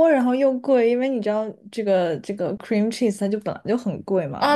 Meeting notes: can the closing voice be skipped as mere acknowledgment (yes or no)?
no